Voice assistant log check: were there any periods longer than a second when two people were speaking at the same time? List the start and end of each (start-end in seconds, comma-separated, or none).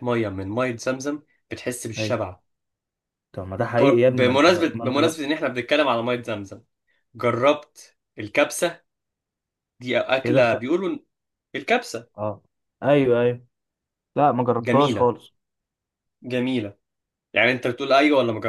3.8-5.2